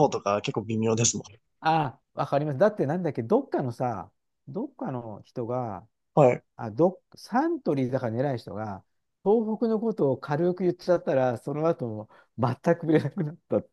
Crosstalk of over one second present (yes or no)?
no